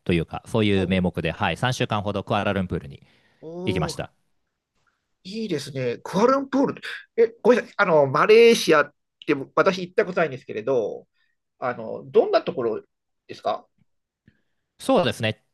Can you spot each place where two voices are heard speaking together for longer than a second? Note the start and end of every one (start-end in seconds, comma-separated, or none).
none